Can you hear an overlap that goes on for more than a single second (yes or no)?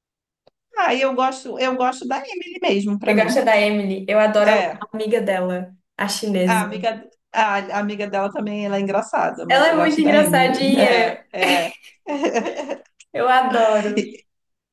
yes